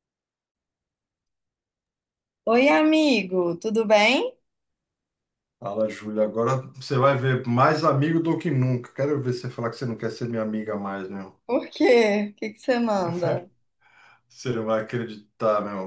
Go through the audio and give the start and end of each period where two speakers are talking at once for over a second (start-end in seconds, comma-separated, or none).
none